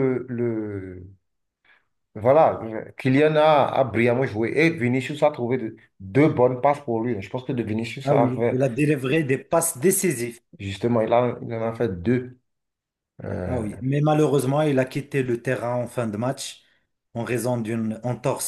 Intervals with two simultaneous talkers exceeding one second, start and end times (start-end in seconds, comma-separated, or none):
none